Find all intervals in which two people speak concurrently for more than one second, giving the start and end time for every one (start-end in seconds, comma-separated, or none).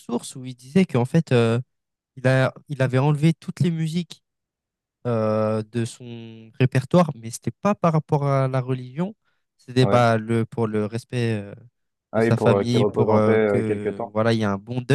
12.1-14.1